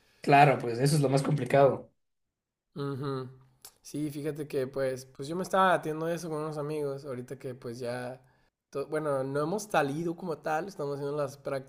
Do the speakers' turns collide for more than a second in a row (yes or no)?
no